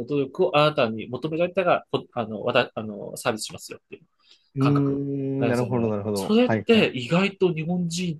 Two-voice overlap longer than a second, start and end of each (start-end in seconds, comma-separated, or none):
4.6-6.9